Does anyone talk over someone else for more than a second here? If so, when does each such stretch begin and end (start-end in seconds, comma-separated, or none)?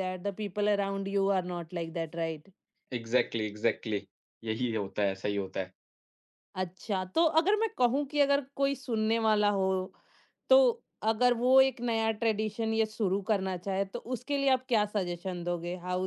none